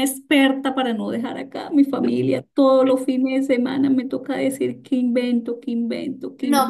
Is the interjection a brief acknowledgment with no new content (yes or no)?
no